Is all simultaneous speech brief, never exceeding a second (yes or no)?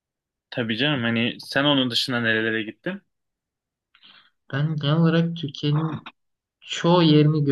yes